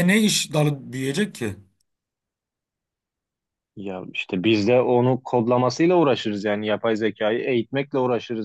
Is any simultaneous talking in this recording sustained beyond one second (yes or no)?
no